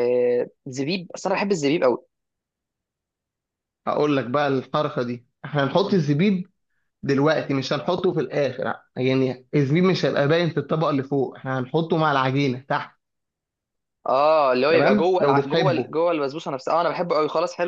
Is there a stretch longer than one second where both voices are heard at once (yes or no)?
yes